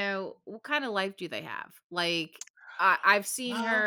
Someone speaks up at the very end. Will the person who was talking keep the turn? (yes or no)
yes